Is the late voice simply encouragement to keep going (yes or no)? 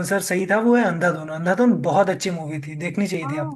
no